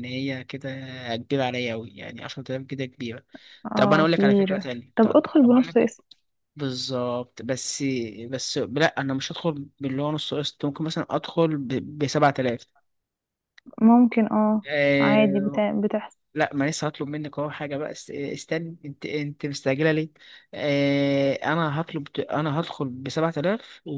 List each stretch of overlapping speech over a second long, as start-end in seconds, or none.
3.7-5.9